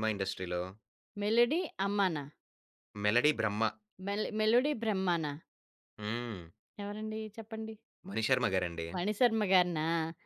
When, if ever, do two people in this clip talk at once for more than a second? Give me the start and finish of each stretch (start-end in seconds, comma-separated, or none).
none